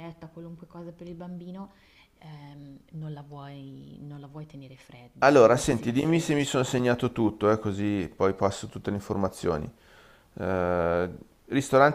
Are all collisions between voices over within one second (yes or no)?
no